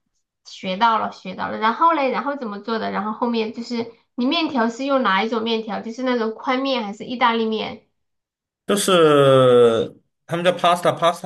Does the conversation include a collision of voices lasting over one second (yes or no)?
no